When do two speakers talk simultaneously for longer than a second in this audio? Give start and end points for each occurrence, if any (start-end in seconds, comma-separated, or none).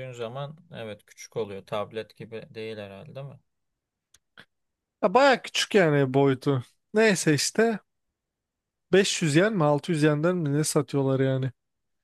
none